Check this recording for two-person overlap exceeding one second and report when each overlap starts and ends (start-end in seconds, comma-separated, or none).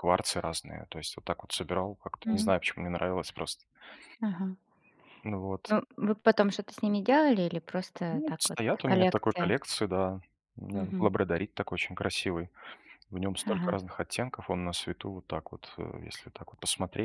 8.1-9.5